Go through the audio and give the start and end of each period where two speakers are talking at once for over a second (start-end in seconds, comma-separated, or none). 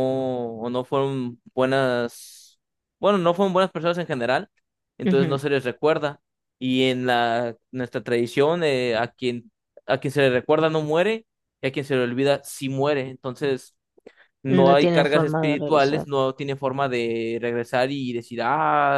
14.5-16.1